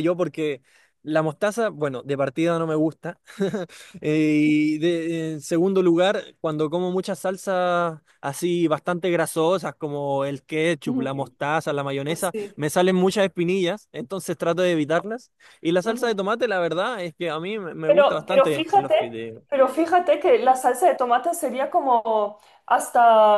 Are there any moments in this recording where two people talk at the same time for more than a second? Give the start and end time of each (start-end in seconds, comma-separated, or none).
17.9-19.4